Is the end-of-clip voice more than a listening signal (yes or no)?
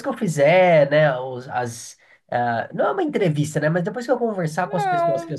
no